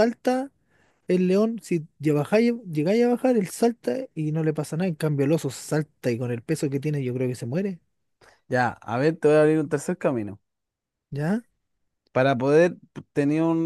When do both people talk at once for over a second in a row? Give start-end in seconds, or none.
none